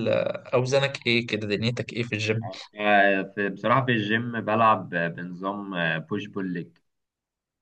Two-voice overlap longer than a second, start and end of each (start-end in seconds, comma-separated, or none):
none